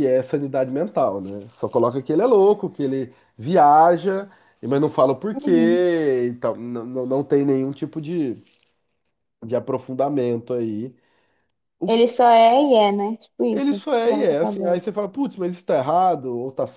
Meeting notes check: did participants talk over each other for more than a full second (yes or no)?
yes